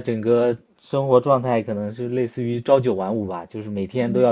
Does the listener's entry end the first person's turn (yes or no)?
no